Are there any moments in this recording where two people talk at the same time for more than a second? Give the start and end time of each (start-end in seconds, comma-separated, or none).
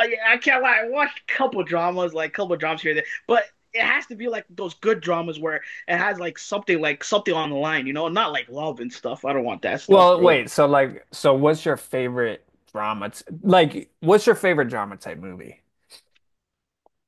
none